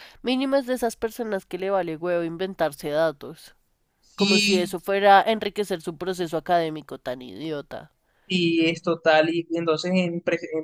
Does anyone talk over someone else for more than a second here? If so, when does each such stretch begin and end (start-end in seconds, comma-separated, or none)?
none